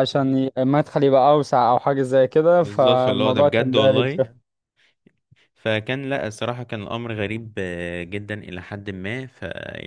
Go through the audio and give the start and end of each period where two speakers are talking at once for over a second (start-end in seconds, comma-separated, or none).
2.6-4.3